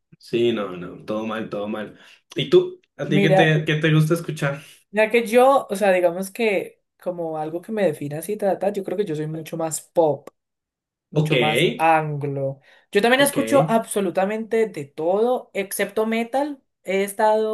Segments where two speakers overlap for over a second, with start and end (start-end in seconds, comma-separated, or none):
none